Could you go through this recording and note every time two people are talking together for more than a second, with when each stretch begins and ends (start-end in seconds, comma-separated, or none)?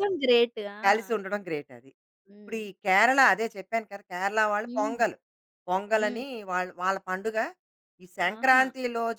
none